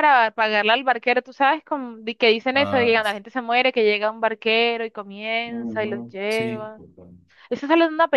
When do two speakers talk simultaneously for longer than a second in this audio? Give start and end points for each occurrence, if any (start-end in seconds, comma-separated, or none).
5.5-6.7